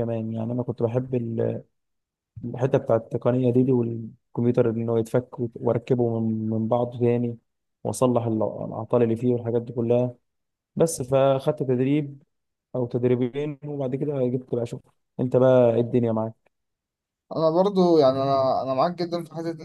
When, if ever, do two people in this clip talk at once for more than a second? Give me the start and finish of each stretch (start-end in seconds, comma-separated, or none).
none